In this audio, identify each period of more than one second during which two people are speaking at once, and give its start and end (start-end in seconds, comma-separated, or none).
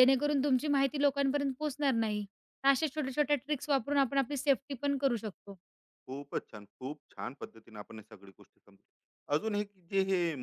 none